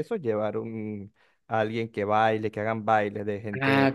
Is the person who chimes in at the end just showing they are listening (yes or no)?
no